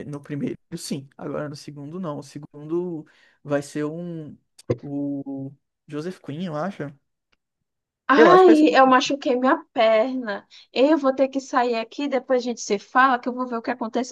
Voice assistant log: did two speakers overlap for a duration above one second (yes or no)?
no